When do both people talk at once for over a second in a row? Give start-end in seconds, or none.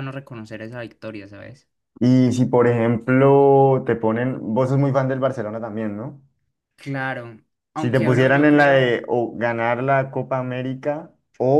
7.8-9.0